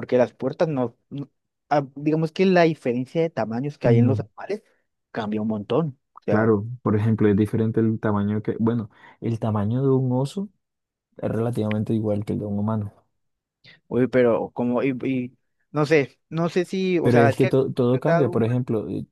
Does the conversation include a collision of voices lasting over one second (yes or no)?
yes